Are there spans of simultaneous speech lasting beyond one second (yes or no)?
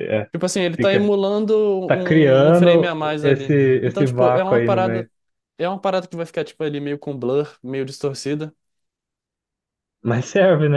yes